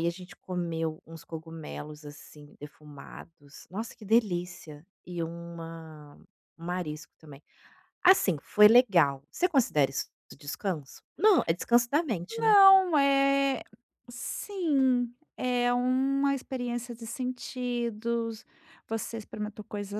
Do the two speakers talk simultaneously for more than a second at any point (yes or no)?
no